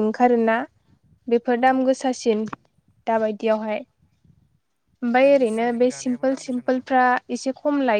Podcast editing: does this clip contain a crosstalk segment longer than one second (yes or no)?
yes